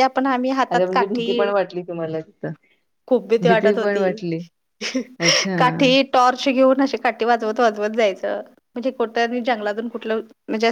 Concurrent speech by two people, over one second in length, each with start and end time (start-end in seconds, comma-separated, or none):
none